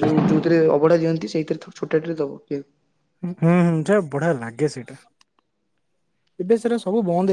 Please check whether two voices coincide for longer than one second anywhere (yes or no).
no